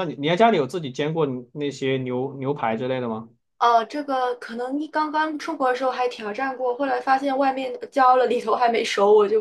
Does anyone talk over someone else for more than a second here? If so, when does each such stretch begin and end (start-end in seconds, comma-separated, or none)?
none